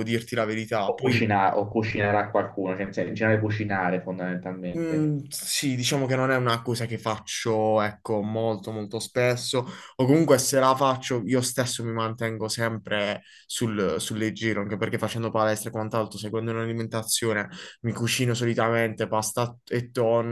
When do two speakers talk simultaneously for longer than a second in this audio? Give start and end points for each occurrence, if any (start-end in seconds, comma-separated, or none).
none